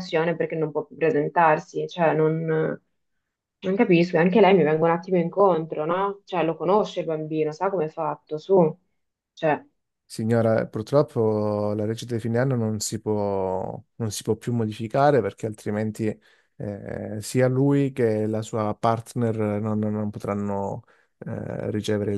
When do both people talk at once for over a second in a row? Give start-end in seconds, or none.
none